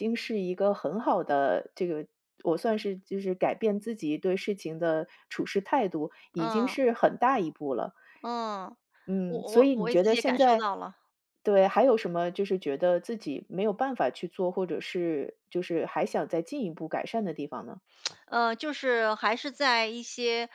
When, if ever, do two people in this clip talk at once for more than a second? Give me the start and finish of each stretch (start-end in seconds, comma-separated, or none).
9.2-10.7